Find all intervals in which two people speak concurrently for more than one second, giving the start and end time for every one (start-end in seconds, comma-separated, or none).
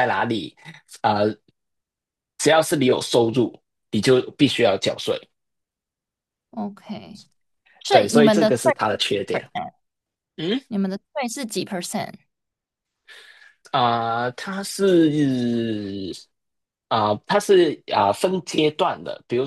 7.9-9.5